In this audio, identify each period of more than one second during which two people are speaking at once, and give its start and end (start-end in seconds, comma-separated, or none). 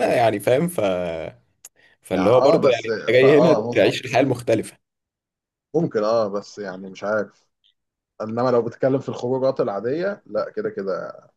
2.1-4.0